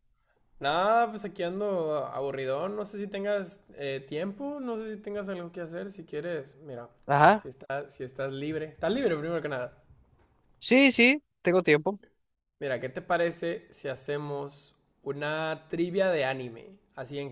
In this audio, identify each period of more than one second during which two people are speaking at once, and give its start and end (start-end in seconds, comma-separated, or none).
none